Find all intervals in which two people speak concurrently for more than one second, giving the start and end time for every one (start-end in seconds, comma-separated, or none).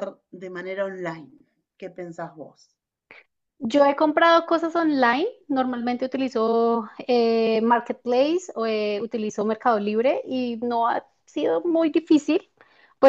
none